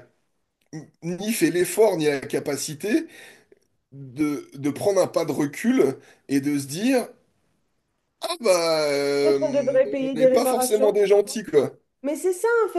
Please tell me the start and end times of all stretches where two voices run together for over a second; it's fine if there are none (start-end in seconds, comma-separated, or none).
9.2-11.0